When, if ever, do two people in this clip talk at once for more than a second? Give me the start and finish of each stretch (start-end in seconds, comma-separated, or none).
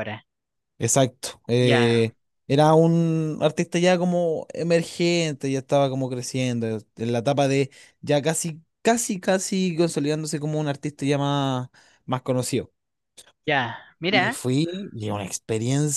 none